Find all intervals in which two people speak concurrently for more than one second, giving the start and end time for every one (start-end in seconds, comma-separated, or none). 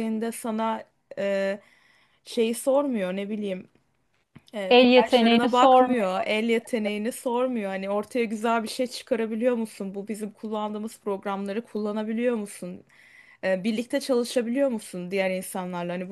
4.7-6.2